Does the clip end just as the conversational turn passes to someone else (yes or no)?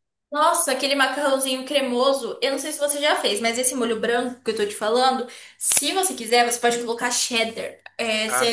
no